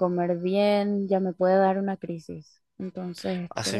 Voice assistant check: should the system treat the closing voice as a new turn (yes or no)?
yes